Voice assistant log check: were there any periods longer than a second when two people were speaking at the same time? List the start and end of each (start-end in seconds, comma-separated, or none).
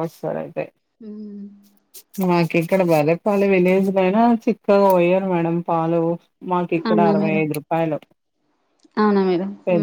none